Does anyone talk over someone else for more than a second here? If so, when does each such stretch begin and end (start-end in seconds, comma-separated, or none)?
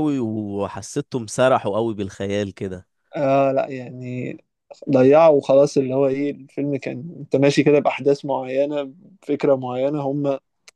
none